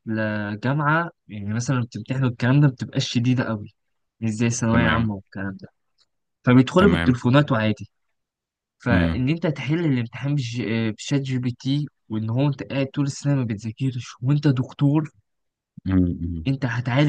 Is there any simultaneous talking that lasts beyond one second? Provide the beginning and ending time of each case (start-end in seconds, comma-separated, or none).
none